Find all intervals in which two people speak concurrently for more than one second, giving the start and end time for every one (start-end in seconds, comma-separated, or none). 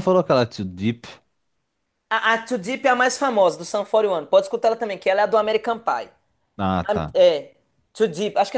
none